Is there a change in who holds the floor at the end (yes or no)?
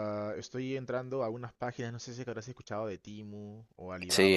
yes